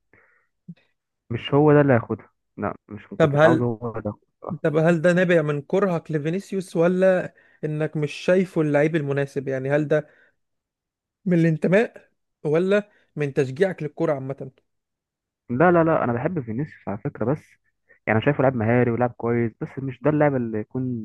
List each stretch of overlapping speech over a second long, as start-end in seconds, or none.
none